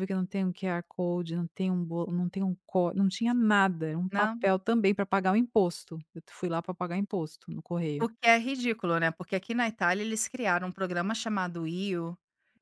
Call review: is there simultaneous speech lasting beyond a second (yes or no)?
no